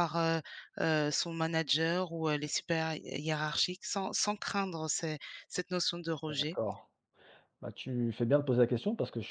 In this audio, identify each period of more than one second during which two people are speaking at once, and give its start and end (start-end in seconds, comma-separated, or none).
none